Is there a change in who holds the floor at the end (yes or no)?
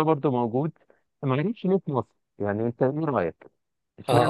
yes